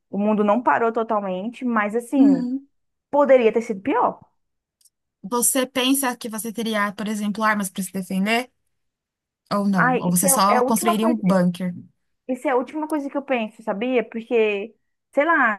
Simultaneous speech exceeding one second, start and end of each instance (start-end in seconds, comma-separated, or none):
9.8-11.2